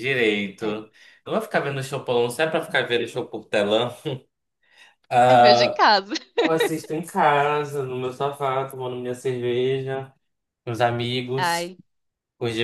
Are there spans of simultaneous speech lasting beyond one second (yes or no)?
no